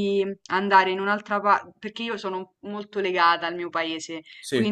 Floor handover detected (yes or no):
no